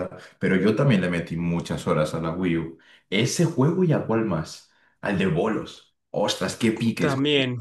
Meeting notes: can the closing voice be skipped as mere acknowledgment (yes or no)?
yes